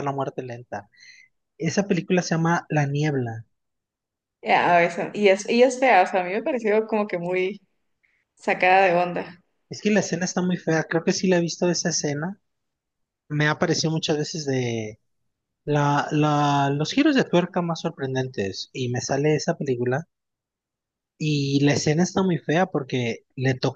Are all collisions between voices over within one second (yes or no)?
yes